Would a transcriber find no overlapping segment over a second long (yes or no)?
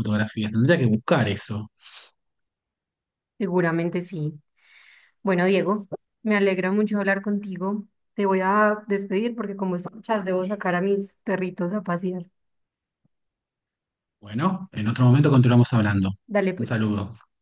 yes